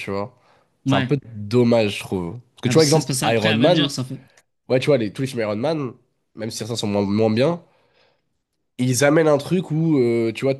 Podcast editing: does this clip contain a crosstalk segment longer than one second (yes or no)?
yes